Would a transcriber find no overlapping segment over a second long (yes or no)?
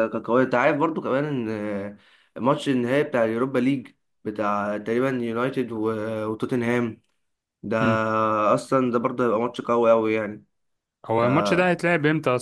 yes